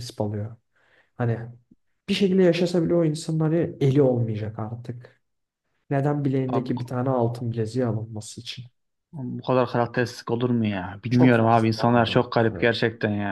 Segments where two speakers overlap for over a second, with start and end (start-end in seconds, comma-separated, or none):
11.1-12.7